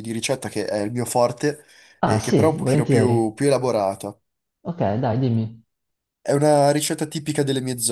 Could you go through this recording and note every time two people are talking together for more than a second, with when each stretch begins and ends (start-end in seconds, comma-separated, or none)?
2.0-3.3